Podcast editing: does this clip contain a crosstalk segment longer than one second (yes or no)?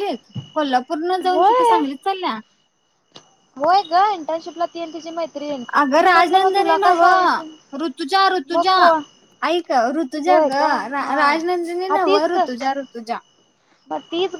yes